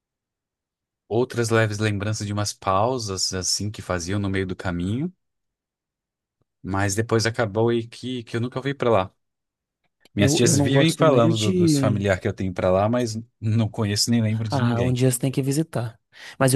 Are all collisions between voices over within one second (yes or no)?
no